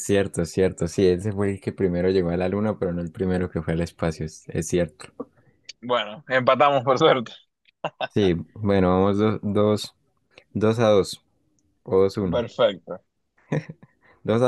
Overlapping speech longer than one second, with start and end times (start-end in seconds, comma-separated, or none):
none